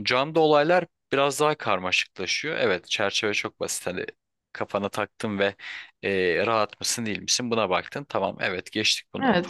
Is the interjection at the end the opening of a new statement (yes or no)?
yes